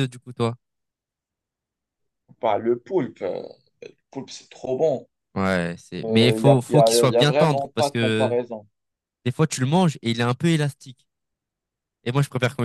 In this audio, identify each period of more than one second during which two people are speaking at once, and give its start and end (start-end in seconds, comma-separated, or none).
6.0-8.3